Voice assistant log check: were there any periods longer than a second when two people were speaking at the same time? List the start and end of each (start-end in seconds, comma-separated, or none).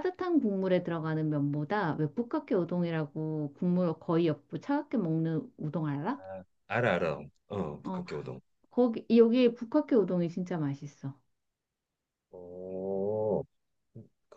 none